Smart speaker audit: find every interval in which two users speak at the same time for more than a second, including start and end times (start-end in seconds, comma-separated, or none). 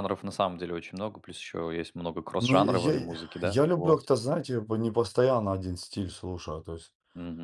2.4-4.1